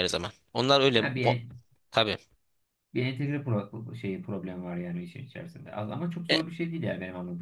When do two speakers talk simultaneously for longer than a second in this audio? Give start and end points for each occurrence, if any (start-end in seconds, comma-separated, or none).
none